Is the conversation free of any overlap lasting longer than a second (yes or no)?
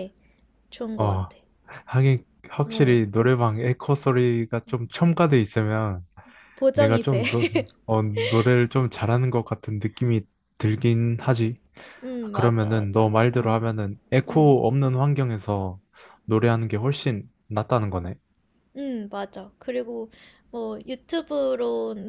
no